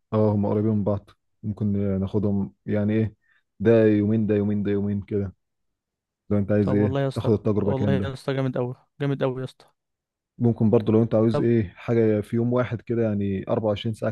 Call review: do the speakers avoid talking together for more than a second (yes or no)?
no